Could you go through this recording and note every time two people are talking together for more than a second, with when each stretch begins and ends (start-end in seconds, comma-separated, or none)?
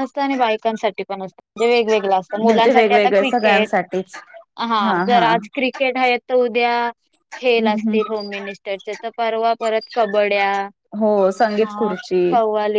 2.4-3.8